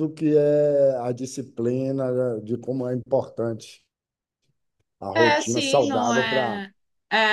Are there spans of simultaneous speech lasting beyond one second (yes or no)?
yes